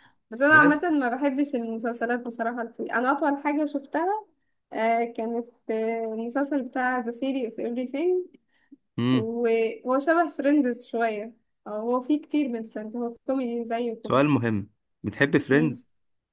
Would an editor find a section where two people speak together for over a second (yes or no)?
no